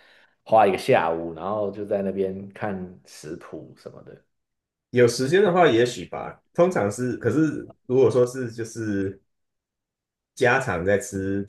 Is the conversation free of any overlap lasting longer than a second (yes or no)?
yes